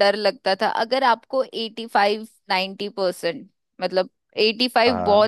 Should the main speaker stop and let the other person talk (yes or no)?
no